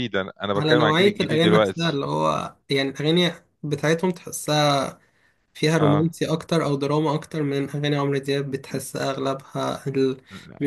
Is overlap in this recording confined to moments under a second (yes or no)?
no